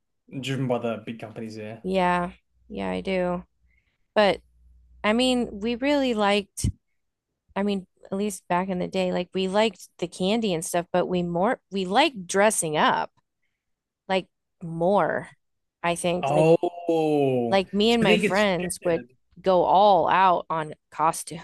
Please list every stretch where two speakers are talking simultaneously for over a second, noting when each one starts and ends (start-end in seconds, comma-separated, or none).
17.5-19.0